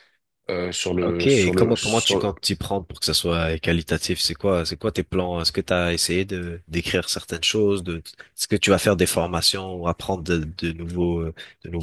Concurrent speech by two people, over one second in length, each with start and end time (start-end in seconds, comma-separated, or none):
1.0-2.3